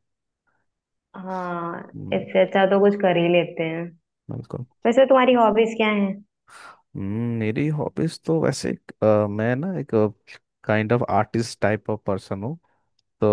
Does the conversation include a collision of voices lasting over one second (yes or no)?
no